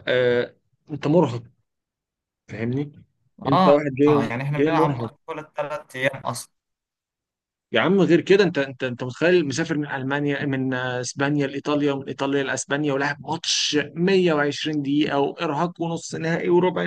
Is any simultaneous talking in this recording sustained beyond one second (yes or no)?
yes